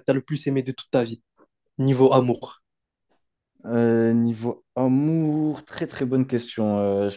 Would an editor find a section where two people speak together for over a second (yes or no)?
no